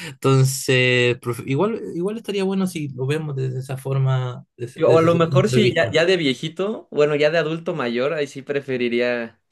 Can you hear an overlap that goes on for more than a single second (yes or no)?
yes